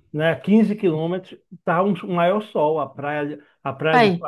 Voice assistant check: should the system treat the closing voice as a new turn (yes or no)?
no